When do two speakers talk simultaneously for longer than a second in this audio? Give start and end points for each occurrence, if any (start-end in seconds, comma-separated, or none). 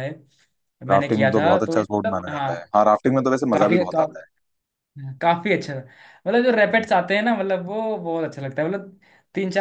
0.9-2.5